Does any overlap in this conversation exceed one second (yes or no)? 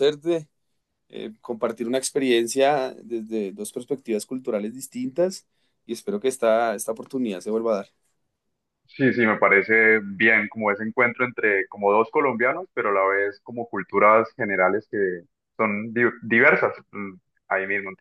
no